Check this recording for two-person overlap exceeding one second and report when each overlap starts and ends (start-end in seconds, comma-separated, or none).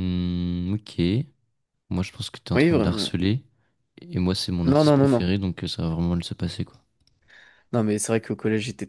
none